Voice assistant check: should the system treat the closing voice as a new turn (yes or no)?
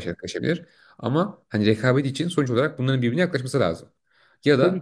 no